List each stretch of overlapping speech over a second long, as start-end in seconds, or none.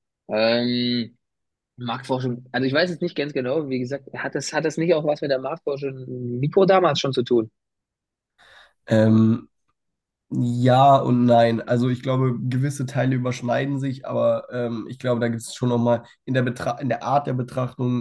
none